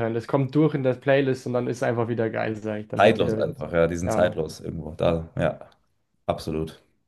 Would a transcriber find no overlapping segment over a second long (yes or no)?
no